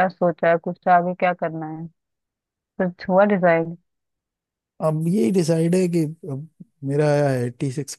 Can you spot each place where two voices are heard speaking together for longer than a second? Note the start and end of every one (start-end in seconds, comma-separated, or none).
none